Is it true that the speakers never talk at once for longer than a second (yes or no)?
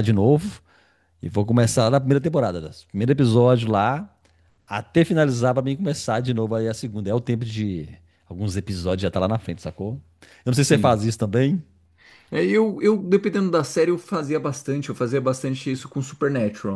yes